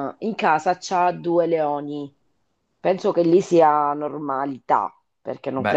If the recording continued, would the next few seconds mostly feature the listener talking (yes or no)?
no